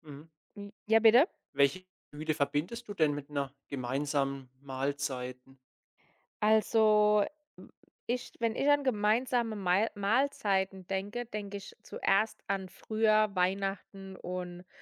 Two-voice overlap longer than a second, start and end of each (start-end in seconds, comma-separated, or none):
none